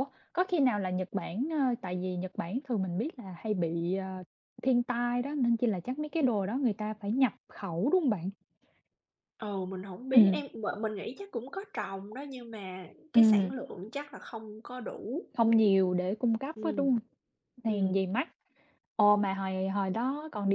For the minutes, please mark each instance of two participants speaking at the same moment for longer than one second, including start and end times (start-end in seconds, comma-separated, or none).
none